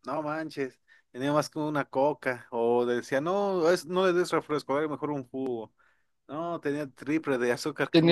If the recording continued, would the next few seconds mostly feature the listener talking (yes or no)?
yes